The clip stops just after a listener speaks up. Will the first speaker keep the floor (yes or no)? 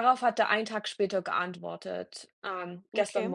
yes